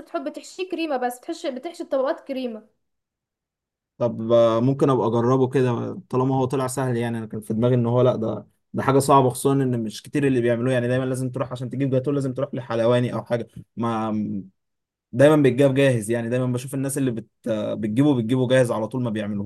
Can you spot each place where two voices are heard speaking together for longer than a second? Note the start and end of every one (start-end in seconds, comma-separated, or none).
none